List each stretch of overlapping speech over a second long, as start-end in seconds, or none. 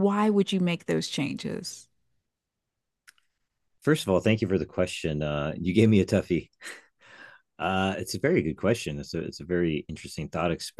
none